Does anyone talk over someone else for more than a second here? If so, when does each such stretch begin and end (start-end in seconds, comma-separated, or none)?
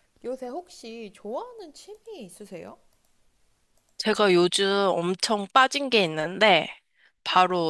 none